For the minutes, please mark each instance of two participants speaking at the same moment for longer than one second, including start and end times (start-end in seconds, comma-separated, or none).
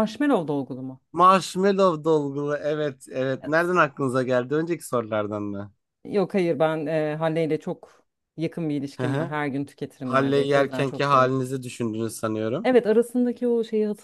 10.0-11.3